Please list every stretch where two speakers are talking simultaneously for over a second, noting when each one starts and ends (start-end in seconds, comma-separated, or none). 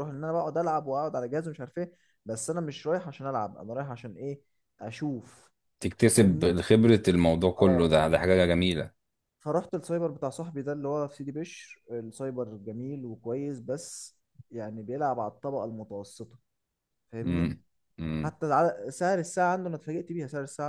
none